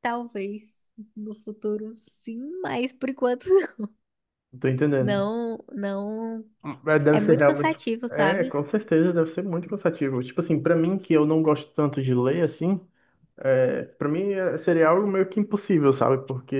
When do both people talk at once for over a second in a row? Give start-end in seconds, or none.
7.1-8.6